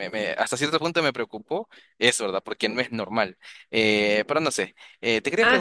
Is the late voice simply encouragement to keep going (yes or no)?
yes